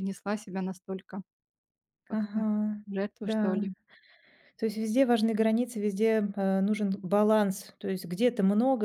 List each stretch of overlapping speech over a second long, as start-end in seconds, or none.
none